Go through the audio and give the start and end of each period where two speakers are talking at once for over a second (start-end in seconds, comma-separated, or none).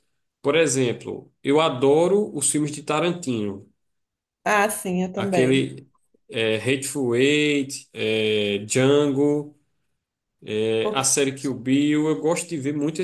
none